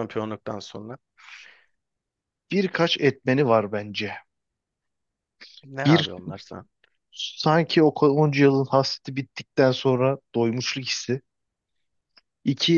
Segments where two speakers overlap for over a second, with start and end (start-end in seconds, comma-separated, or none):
none